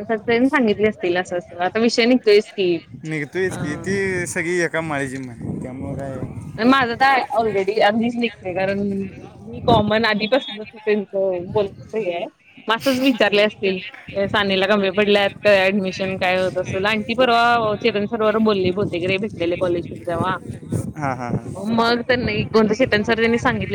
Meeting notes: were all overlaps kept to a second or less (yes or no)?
yes